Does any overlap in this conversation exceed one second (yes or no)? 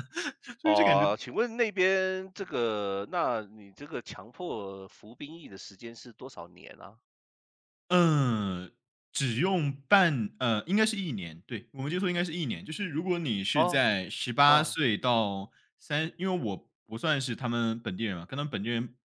no